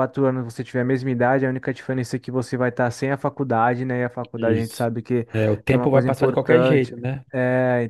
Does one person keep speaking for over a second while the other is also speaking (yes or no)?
yes